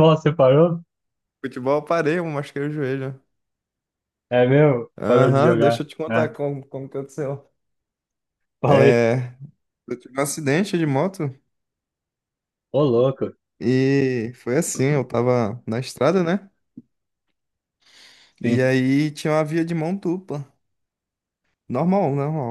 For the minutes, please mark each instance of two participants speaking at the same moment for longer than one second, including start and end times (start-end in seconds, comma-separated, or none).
5.0-6.3